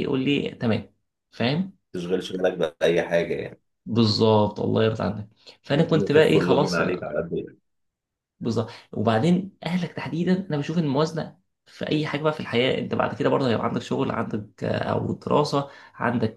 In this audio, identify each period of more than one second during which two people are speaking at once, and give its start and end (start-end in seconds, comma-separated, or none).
5.7-7.1